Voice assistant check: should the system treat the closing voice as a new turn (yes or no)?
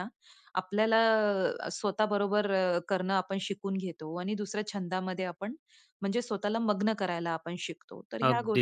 yes